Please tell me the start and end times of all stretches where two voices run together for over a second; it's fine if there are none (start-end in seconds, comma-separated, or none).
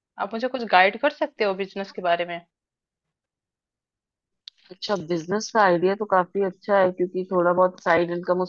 none